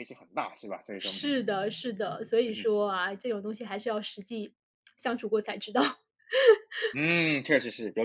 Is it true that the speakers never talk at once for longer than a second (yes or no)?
yes